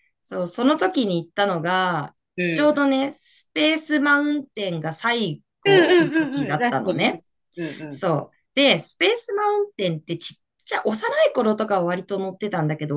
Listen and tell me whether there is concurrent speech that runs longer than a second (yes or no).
yes